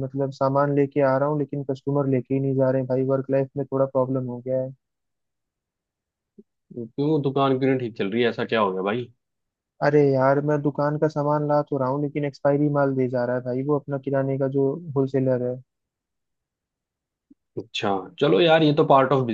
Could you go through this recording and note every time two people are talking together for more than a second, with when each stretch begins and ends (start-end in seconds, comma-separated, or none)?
none